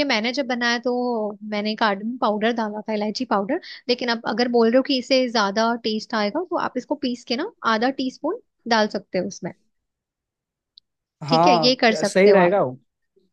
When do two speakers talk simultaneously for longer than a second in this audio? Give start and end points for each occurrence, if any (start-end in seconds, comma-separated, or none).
11.3-12.5